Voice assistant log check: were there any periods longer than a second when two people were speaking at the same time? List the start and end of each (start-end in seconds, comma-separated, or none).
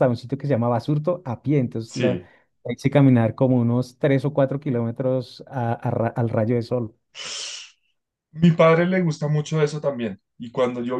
none